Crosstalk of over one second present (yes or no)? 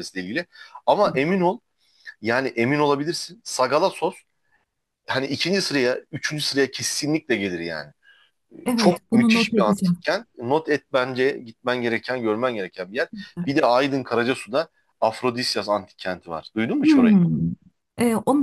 yes